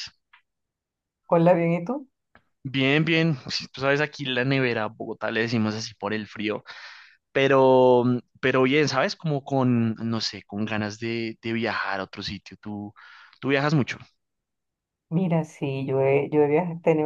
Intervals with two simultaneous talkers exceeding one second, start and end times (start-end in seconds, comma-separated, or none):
none